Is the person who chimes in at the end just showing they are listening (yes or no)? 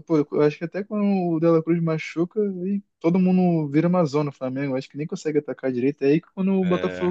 yes